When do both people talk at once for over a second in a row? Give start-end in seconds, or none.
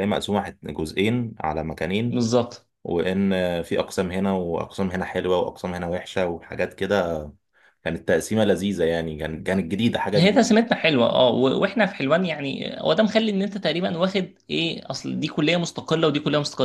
none